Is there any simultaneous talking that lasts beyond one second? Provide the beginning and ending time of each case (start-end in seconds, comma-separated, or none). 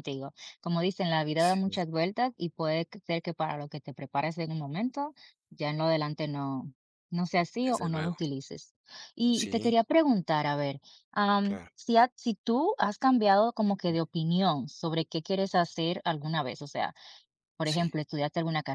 none